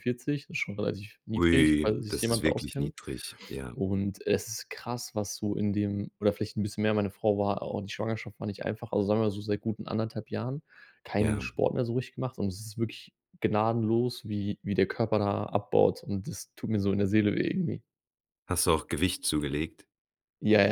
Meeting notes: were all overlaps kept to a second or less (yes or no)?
no